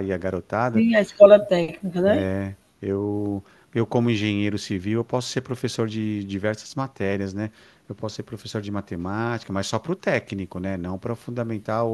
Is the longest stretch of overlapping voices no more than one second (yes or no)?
yes